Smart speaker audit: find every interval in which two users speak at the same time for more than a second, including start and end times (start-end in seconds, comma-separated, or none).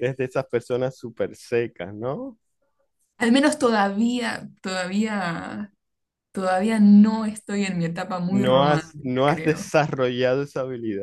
8.3-9.7